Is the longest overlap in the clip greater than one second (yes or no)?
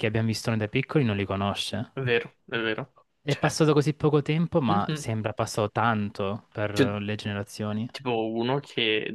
no